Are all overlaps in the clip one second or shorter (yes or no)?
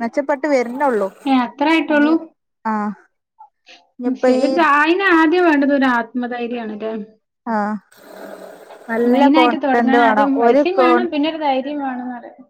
no